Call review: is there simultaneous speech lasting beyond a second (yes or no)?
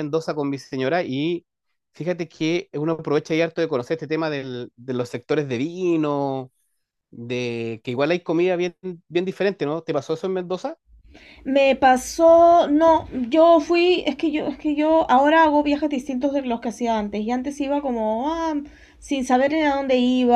no